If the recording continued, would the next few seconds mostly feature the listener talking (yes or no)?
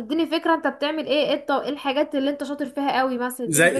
yes